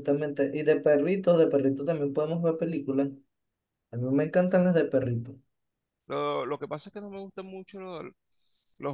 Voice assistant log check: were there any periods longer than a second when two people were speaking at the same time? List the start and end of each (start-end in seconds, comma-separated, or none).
none